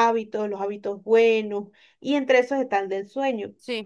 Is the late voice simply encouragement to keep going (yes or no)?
yes